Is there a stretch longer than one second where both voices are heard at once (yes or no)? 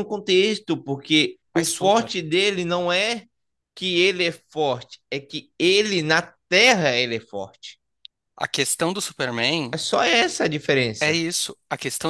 no